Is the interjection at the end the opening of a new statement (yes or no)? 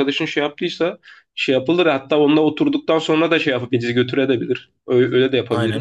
yes